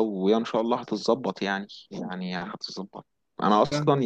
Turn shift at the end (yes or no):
no